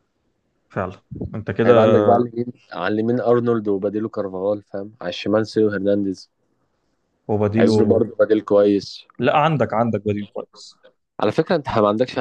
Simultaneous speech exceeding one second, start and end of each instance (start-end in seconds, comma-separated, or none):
none